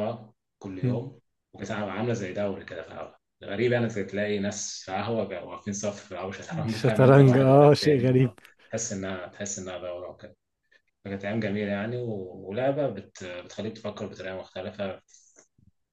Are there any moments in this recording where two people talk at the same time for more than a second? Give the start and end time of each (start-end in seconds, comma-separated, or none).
6.5-8.3